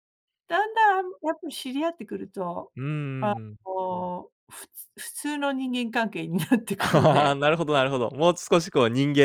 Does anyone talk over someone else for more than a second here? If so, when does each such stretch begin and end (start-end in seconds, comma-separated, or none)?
none